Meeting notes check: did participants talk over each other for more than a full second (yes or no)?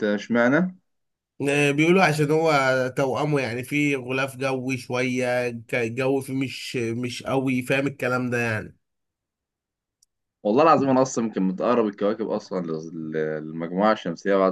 no